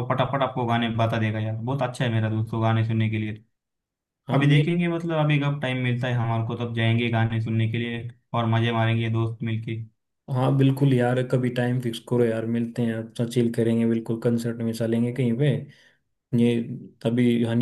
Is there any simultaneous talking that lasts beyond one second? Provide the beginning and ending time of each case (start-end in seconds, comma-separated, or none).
none